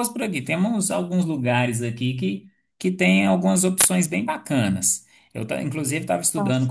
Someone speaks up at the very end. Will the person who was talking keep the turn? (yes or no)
yes